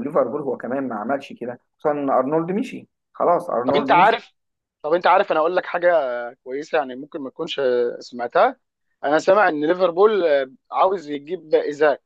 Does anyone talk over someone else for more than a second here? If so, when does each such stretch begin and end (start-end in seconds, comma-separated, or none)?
none